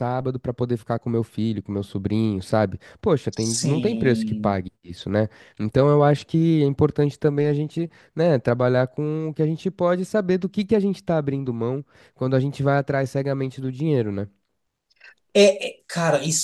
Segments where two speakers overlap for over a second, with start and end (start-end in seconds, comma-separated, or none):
3.4-4.6